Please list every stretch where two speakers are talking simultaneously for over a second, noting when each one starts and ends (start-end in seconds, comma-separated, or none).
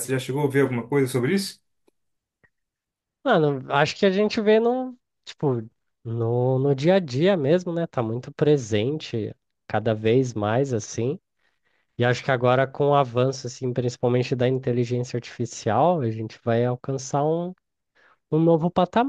none